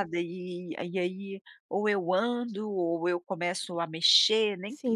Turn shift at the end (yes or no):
yes